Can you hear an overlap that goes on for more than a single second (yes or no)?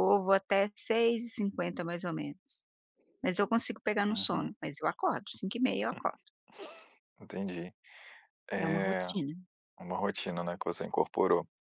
no